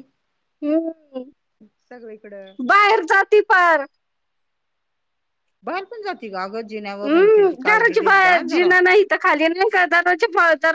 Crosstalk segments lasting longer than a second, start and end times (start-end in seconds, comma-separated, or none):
7.1-8.7